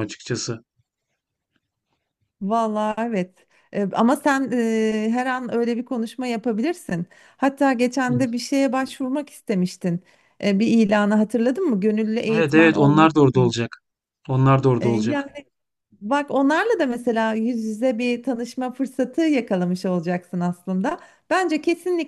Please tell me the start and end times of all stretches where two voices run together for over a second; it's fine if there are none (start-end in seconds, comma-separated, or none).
12.3-13.5